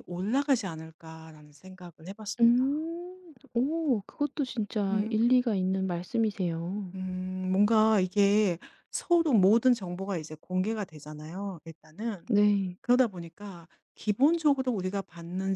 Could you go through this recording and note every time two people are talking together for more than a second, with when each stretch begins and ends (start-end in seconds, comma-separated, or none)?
none